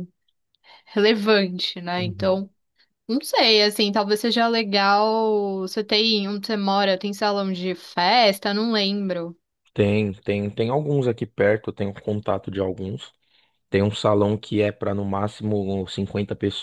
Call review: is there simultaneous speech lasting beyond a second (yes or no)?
no